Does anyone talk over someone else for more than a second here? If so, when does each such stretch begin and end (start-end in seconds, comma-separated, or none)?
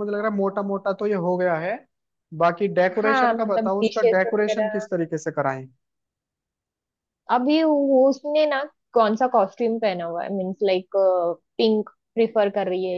3.0-4.9